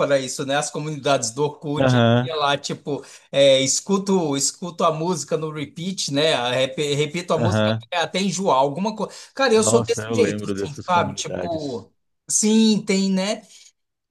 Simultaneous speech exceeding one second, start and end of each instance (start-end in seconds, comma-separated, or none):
9.5-11.9